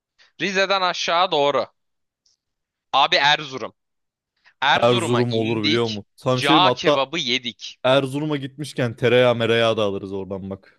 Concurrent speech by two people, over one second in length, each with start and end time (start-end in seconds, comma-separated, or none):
4.8-7.1